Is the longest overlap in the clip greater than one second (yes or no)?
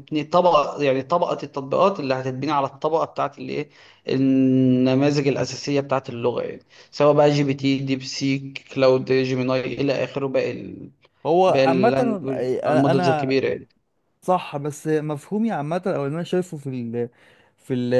yes